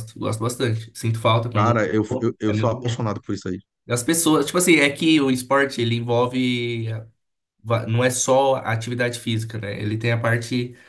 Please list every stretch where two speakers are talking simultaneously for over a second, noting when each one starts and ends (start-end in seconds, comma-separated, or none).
1.5-3.1